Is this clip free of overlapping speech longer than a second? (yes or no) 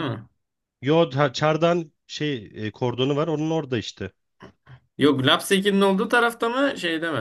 yes